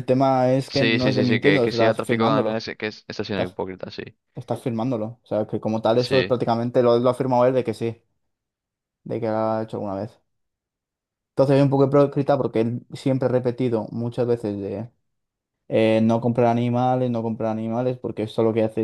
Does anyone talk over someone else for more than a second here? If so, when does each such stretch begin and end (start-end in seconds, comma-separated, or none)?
0.7-2.7